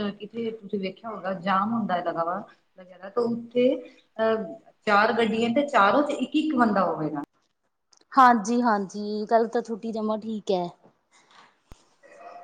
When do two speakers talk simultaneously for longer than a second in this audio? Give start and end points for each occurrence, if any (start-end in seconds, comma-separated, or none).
none